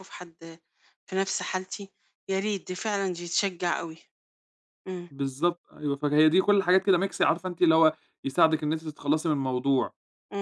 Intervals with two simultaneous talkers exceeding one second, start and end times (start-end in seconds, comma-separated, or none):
none